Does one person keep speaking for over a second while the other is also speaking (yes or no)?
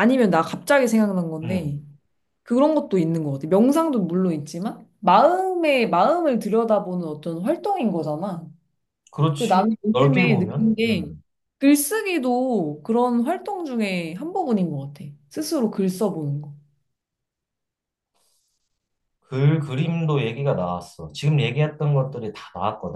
yes